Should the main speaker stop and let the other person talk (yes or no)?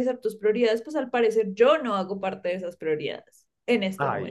yes